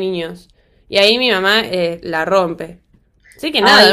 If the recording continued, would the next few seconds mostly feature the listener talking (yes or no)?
yes